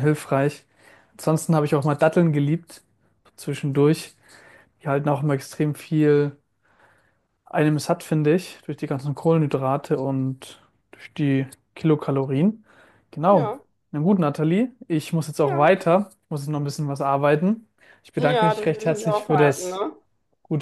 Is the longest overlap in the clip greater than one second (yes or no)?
yes